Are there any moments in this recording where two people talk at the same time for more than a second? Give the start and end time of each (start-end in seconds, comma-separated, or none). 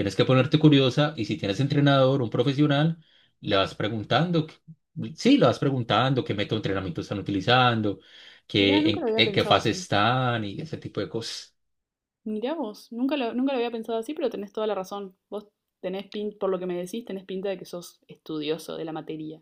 8.6-9.9